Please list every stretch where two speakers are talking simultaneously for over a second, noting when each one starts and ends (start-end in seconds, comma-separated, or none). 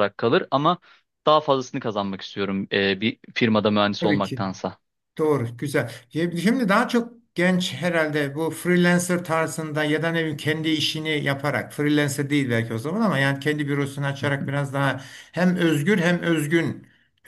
none